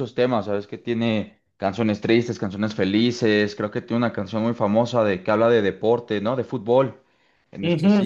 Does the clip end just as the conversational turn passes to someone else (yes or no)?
yes